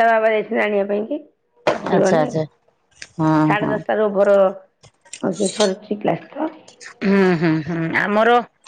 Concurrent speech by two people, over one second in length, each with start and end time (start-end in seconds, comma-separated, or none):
none